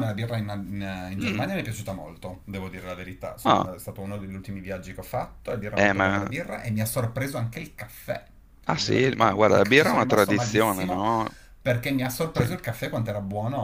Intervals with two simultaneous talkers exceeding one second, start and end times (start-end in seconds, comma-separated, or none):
8.6-11.0